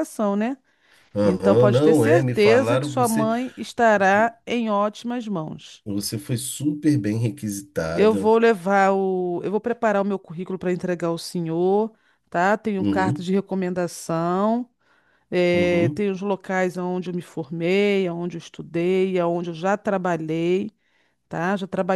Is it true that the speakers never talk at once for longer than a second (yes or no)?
no